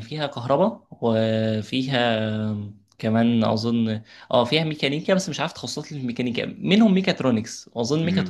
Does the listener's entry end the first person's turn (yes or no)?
no